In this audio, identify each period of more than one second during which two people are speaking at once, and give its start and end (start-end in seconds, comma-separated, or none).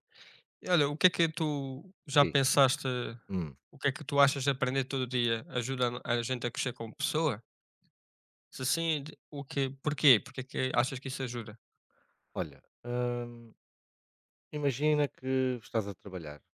none